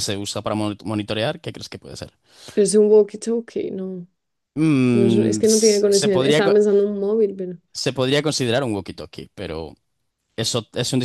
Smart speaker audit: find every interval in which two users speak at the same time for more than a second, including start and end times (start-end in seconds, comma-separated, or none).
4.9-6.5